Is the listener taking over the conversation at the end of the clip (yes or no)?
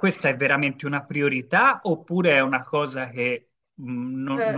yes